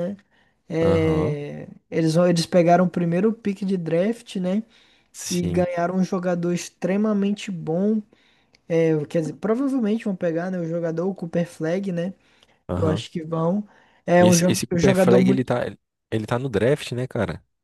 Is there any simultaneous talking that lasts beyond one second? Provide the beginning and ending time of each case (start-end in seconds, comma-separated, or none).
14.2-15.5